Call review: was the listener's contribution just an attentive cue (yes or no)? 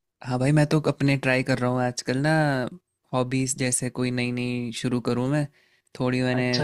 yes